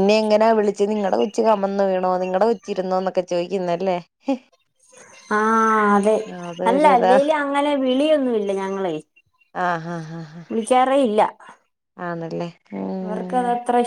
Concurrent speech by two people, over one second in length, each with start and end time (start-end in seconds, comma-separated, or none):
none